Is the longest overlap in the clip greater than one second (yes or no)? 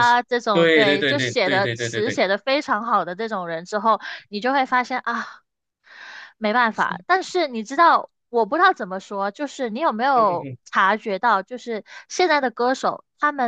yes